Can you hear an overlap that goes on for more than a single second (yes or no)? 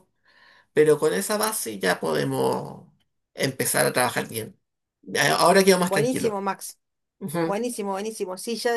no